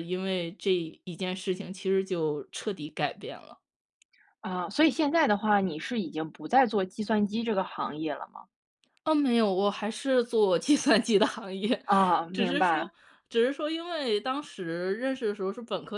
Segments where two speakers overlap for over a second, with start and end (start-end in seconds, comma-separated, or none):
none